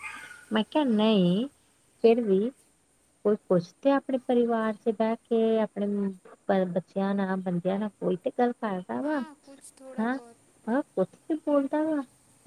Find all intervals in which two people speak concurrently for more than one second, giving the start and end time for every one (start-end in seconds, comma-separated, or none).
none